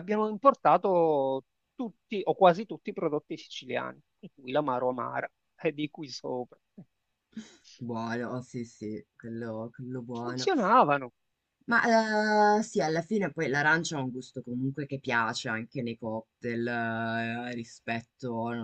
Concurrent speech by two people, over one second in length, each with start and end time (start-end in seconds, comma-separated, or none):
none